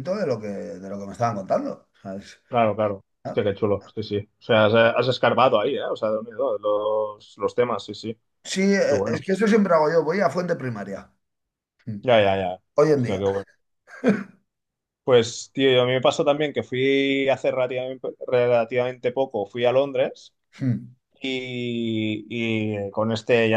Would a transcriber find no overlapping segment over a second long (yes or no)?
yes